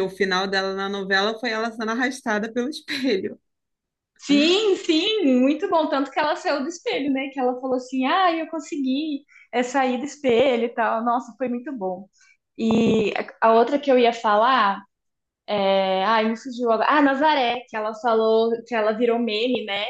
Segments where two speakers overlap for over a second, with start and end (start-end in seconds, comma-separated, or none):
none